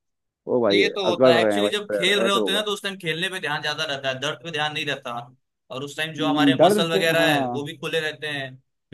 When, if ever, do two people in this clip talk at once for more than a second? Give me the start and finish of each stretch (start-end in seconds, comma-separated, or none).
0.7-2.6, 6.2-7.7